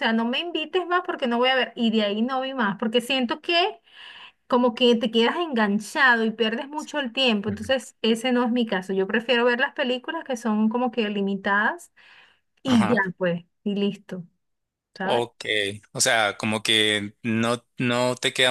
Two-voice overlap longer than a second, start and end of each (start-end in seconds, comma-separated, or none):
none